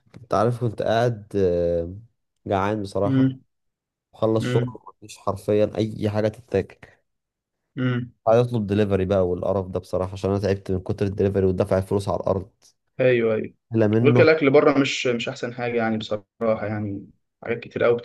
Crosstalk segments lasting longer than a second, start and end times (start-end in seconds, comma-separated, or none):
none